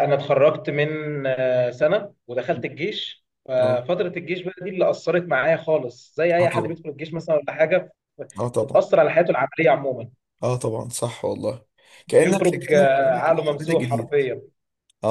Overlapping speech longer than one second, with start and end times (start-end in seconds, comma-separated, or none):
12.2-14.2